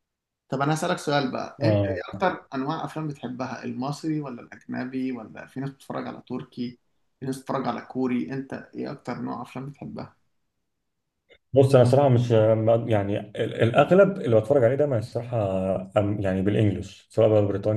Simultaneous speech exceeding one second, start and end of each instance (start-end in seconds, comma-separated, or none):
none